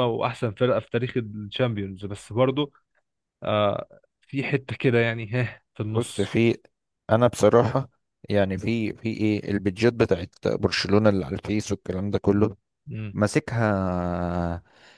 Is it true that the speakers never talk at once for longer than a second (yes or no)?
yes